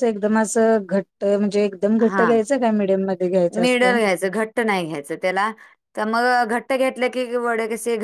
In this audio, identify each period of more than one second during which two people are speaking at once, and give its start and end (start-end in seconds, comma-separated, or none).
none